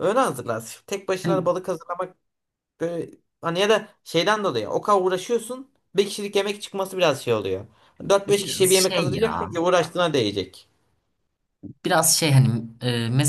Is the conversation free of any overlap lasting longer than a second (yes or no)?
no